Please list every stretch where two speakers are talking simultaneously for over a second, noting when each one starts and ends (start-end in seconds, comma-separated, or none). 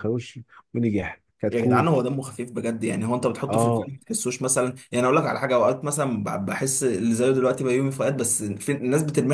none